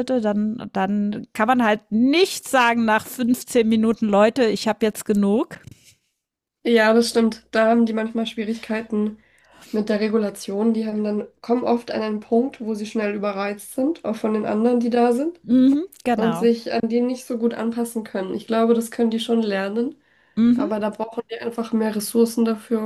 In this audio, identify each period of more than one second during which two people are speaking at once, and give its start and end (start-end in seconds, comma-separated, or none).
none